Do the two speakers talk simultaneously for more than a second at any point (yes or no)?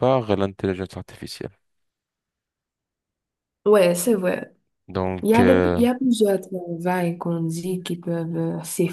no